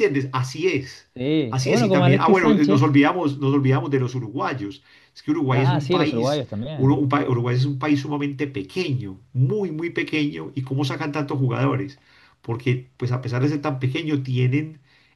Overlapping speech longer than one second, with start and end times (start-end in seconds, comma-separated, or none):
1.5-3.0, 5.5-7.0